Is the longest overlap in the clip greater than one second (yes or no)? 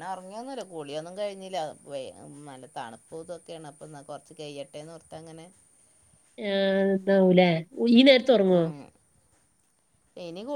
no